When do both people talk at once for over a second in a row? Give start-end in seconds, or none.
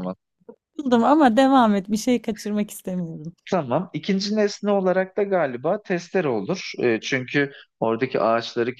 none